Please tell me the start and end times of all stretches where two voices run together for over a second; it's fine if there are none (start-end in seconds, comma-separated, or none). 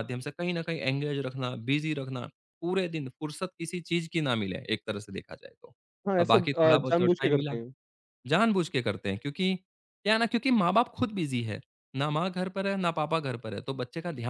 6.2-7.5